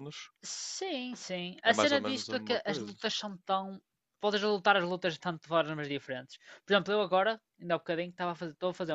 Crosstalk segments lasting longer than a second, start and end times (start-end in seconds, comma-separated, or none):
1.6-3.0